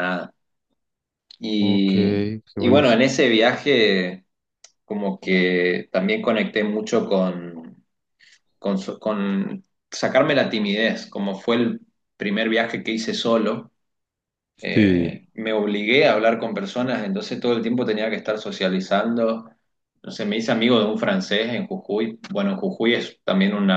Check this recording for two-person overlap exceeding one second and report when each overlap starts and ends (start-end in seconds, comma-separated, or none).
1.6-3.0